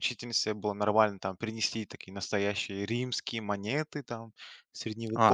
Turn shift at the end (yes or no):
yes